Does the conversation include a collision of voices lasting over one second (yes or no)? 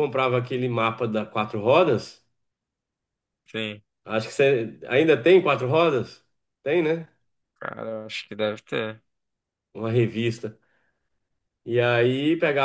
no